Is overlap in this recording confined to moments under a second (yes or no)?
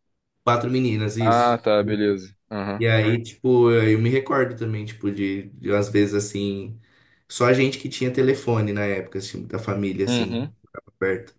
yes